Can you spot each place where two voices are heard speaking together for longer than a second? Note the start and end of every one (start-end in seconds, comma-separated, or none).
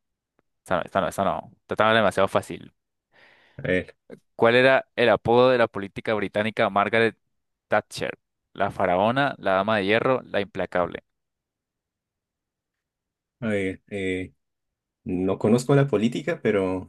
none